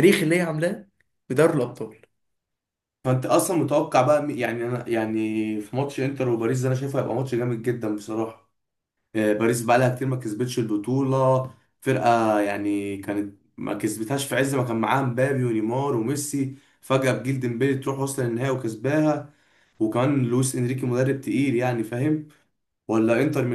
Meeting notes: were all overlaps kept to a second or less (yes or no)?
yes